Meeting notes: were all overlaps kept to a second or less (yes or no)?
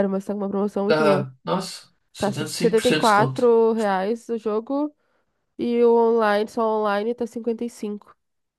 no